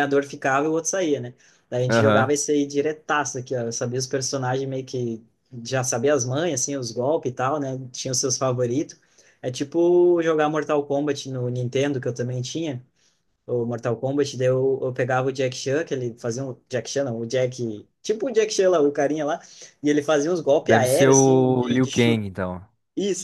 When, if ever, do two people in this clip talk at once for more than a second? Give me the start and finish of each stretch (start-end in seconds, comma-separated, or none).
20.6-22.2